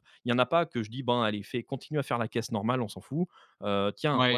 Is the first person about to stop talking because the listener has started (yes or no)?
yes